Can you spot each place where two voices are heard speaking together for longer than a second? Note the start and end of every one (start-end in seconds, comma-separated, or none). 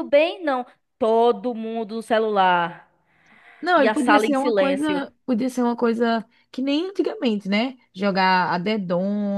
3.7-5.0